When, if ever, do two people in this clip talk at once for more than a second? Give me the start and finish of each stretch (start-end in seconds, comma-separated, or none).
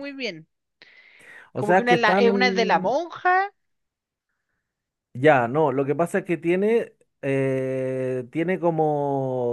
1.6-3.0